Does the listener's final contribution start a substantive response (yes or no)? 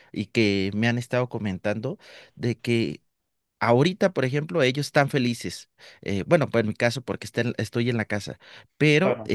no